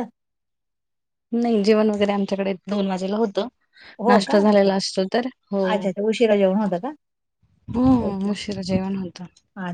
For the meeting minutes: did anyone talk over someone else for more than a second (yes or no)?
no